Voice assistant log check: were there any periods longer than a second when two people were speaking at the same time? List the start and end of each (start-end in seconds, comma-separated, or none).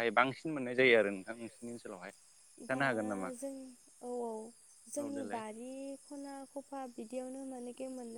none